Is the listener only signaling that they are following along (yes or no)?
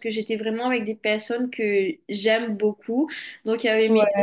yes